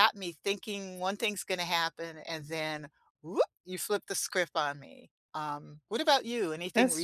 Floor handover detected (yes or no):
yes